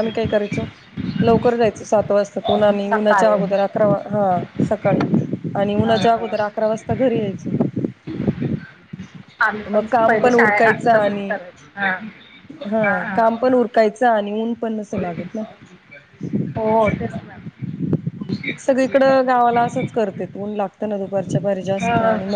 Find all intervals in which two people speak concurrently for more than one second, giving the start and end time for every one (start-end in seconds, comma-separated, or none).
9.7-11.3